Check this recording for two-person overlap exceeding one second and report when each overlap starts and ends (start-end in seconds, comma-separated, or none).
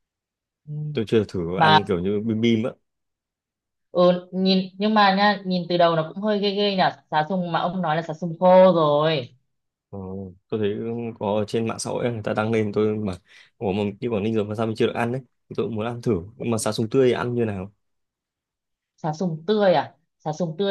none